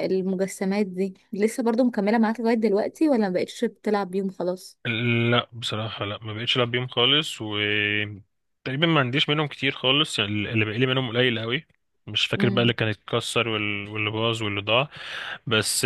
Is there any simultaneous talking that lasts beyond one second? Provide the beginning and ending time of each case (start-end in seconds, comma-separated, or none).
none